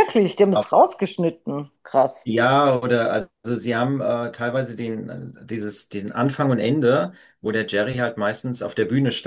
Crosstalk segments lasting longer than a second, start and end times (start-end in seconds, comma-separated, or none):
none